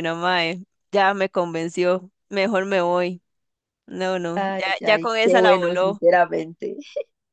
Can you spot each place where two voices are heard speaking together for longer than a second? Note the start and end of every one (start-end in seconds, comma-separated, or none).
4.3-6.0